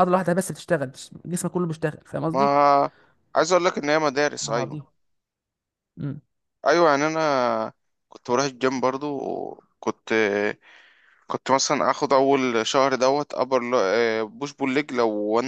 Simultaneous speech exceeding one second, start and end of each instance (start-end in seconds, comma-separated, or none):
none